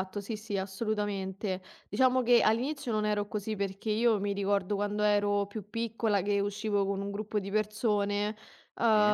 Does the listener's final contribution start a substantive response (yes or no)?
no